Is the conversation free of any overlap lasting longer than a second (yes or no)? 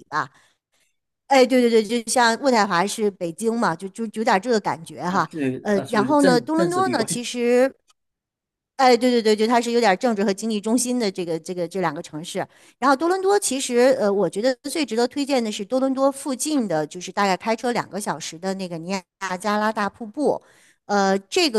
no